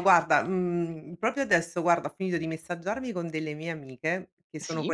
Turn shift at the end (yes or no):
no